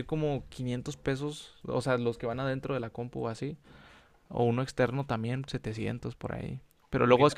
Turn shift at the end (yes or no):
no